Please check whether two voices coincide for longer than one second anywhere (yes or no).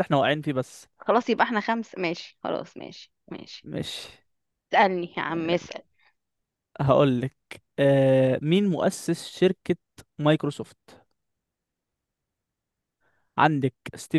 no